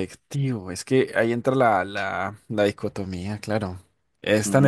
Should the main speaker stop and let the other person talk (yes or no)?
no